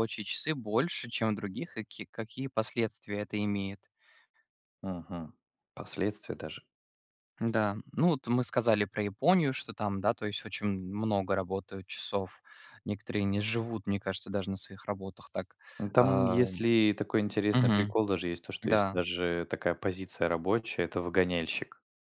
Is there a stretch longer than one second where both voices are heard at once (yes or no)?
no